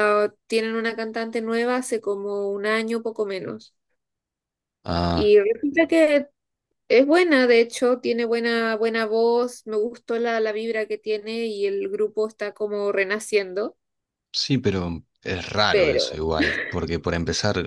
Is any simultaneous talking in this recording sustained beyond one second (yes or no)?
no